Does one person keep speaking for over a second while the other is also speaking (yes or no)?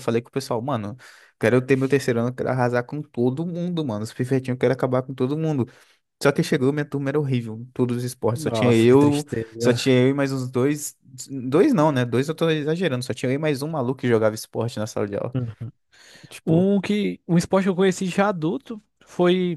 yes